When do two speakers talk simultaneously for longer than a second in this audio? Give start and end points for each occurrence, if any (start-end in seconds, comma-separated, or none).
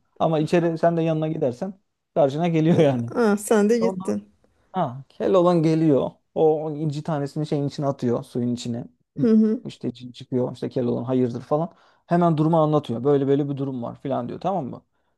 none